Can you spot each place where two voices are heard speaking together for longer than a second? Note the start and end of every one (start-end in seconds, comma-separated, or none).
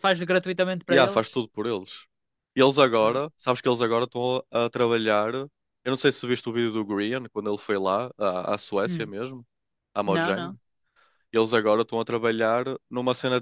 none